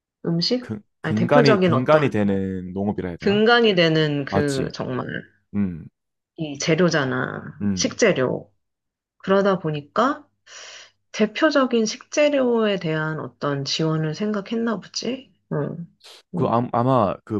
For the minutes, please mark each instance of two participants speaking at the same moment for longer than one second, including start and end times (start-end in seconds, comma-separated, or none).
0.6-2.2